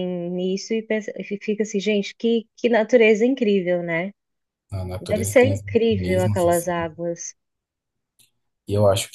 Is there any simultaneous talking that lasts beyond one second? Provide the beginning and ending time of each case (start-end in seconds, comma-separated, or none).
5.0-6.9